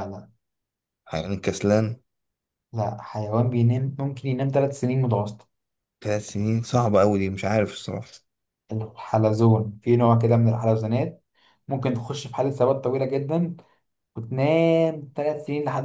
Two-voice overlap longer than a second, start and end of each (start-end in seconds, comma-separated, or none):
none